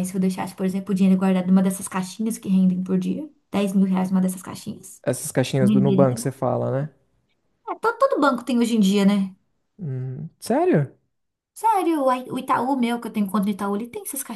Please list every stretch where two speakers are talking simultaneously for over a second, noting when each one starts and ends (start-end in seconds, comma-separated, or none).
none